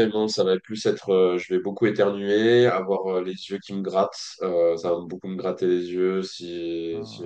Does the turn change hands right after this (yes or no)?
no